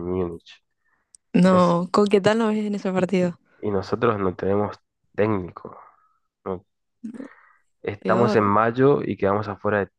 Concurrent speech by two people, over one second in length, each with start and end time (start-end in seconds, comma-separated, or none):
none